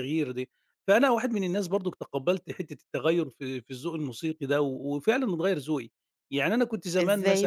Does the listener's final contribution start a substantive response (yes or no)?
yes